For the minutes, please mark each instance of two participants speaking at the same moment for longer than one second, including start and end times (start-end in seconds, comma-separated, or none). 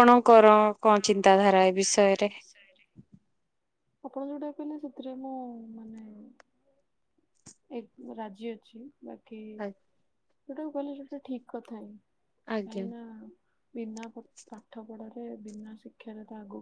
none